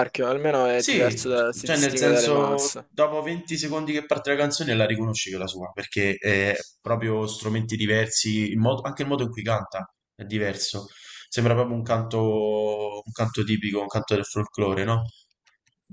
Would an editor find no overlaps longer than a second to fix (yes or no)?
no